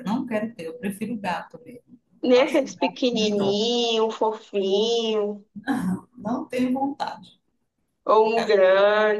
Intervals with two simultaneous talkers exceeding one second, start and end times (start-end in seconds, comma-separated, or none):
2.2-3.6